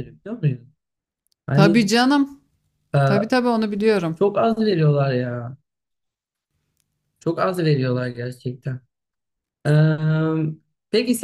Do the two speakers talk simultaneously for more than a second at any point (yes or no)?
no